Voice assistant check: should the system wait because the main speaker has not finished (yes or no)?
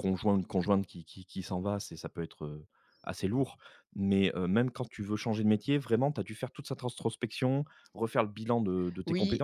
no